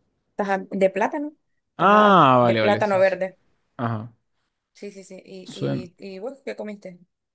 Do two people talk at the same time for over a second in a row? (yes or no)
yes